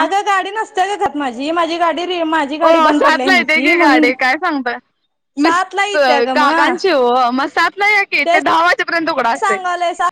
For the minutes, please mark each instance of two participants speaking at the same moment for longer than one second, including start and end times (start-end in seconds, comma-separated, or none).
2.6-4.1